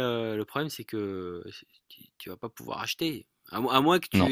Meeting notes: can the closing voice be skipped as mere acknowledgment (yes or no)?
yes